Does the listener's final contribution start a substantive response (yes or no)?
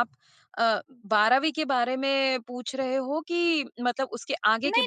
yes